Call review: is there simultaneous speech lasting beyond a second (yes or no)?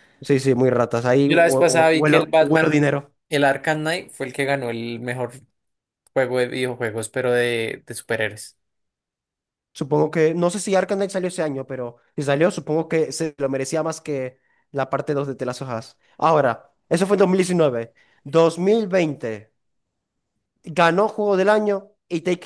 yes